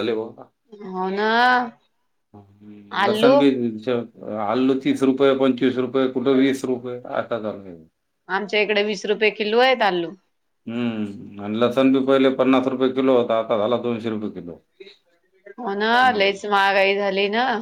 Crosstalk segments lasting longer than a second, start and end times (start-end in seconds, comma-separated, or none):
none